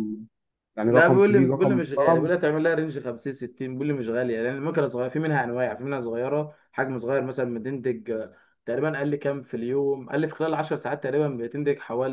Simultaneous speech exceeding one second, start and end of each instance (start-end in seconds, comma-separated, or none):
0.9-2.3